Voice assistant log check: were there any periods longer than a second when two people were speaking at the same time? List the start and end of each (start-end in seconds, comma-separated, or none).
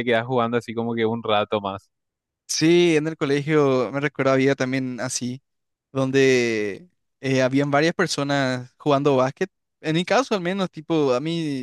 none